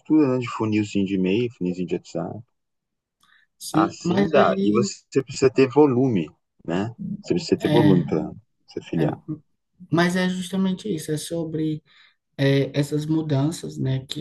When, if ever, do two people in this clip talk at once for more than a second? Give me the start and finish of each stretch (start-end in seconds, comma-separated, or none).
3.7-4.9